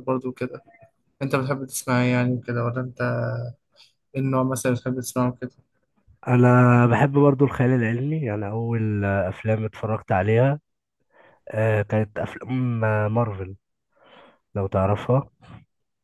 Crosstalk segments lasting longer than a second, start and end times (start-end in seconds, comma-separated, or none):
none